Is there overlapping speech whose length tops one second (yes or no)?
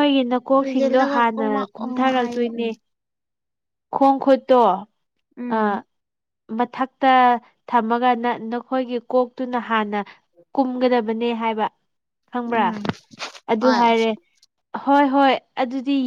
yes